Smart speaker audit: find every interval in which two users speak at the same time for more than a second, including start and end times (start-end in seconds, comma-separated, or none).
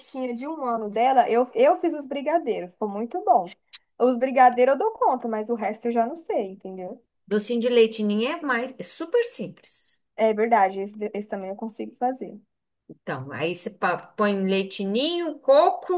none